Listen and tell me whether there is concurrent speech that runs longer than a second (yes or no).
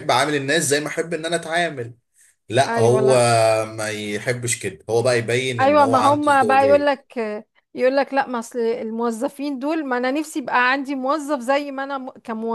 yes